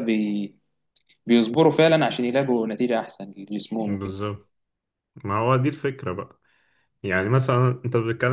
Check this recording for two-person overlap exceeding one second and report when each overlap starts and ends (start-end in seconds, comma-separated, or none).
none